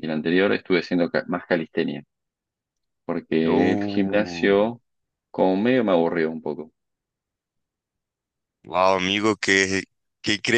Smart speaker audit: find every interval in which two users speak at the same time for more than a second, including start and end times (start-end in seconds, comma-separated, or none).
3.4-4.7